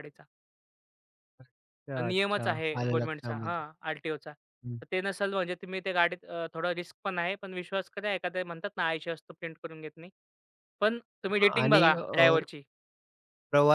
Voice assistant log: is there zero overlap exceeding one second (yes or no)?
no